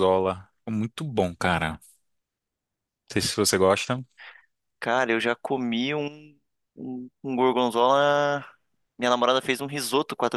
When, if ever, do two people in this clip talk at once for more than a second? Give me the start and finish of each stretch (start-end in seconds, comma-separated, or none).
none